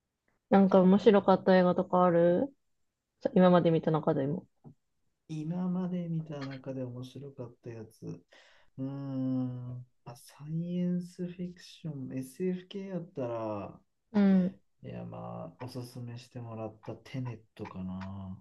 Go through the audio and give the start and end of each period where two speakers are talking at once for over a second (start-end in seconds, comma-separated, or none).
none